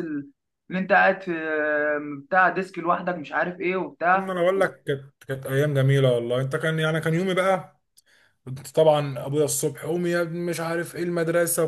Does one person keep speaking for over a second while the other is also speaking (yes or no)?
no